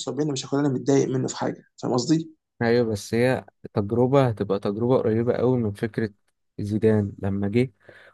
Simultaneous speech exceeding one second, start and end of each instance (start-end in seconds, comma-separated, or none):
none